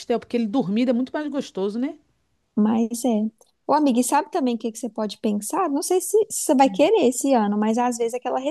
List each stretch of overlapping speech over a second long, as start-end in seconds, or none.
none